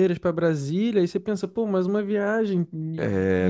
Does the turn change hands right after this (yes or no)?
yes